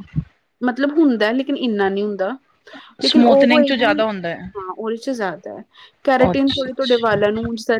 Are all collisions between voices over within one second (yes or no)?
no